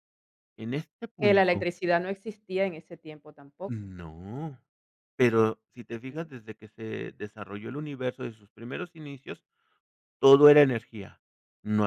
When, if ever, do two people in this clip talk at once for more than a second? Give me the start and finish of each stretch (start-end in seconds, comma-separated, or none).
none